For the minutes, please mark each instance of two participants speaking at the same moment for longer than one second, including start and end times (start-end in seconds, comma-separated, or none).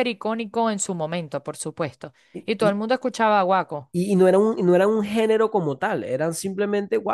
none